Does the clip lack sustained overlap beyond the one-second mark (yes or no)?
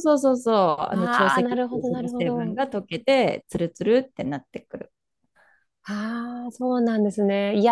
no